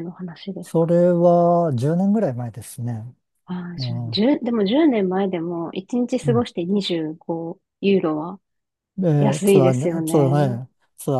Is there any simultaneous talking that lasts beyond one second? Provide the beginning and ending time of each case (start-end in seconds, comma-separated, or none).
9.2-10.6